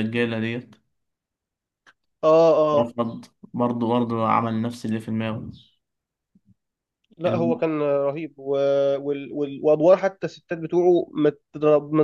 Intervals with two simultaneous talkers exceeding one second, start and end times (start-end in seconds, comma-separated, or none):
none